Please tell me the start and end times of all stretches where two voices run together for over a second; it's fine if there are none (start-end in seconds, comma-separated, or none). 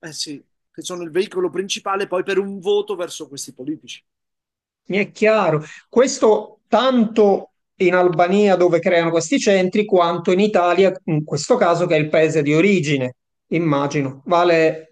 none